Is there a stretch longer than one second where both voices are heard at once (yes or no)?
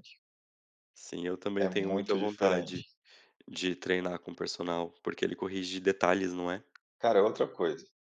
yes